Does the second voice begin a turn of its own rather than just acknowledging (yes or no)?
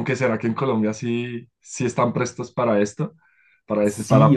yes